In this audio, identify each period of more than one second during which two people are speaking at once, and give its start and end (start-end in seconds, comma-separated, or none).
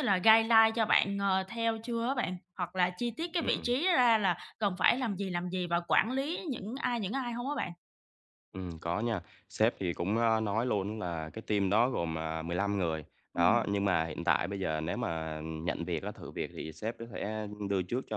none